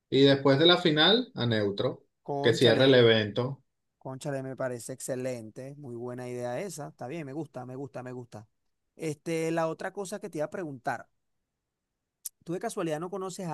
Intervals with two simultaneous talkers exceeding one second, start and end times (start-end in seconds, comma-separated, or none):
none